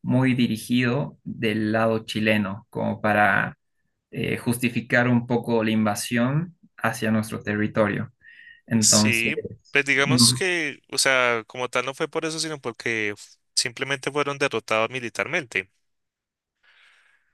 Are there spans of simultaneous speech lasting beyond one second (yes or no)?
yes